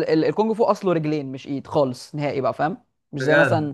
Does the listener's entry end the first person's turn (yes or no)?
no